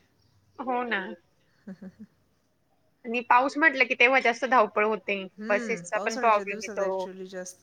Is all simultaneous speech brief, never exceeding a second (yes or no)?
no